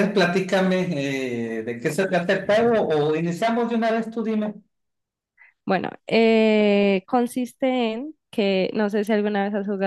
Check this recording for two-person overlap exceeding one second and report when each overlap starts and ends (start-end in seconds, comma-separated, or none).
none